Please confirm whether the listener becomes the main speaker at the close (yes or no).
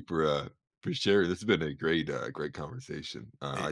yes